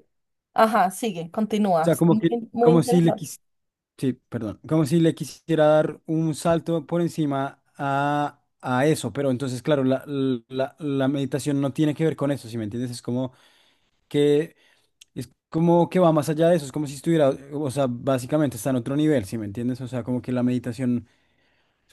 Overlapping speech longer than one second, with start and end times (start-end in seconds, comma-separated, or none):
1.8-3.3